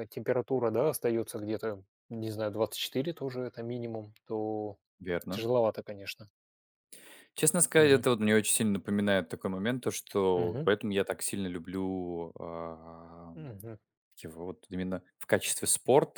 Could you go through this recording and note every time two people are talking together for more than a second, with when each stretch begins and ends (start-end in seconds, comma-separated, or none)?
none